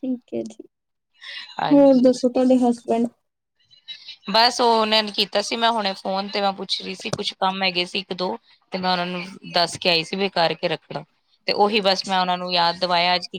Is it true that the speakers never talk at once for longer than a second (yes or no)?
yes